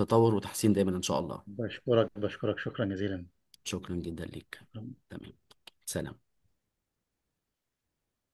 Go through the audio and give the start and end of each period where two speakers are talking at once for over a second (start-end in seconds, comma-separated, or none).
none